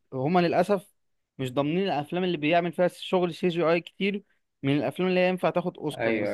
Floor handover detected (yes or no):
yes